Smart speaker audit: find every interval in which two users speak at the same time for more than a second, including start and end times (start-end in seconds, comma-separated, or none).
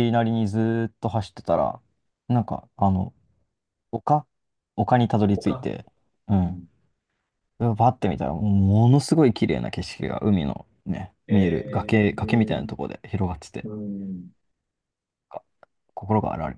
11.3-12.7